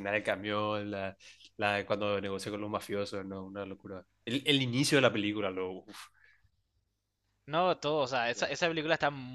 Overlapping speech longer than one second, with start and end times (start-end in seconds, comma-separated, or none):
none